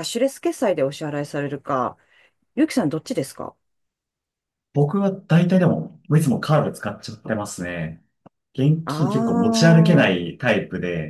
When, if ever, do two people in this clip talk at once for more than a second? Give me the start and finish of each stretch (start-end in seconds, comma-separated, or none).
8.8-10.1